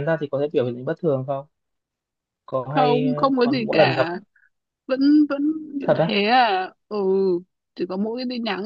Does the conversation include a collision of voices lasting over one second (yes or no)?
yes